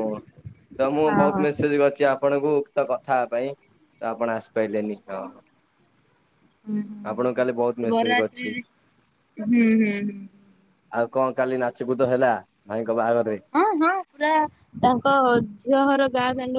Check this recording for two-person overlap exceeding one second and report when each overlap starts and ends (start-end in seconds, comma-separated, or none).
7.1-8.6